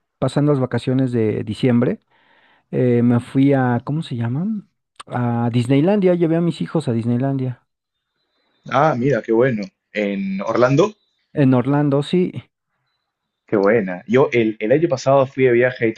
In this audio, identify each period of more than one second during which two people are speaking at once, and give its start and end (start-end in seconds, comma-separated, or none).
none